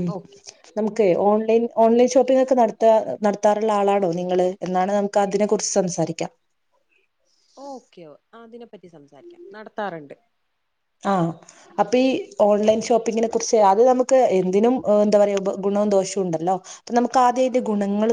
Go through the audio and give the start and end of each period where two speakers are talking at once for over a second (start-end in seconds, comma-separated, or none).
none